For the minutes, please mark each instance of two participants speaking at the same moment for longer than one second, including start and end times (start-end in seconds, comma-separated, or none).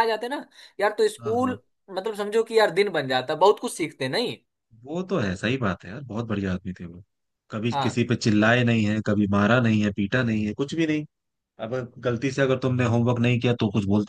none